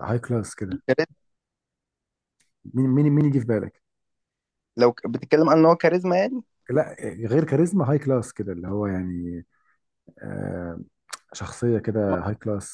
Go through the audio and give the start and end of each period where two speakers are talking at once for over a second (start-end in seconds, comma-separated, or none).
none